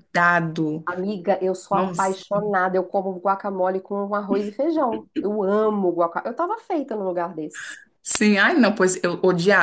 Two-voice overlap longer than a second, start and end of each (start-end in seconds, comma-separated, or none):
none